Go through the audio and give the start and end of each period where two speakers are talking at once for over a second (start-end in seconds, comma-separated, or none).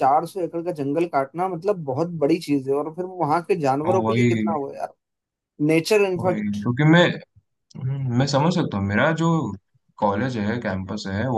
none